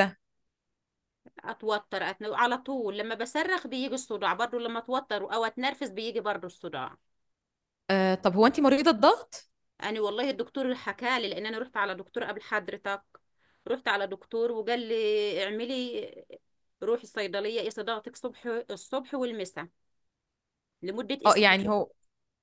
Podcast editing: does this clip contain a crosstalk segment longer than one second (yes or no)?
no